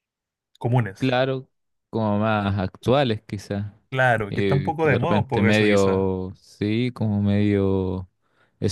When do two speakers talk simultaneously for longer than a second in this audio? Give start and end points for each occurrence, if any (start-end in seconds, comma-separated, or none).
4.3-6.0